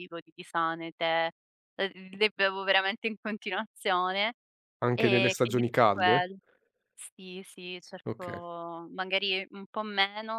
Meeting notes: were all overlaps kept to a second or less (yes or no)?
no